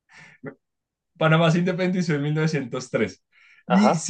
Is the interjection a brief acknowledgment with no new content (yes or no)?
yes